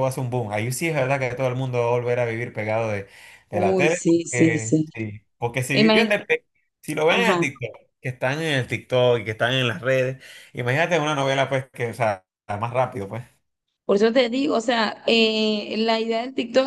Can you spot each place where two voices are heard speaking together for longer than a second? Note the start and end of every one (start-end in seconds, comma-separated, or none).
3.5-4.9